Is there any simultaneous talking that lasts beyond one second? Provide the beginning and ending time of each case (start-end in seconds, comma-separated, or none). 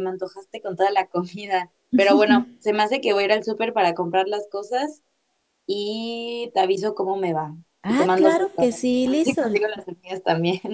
7.8-9.4